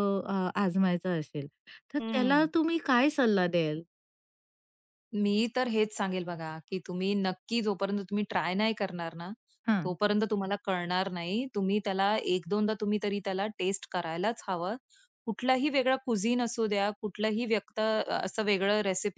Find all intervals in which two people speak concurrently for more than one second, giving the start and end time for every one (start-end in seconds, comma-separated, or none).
none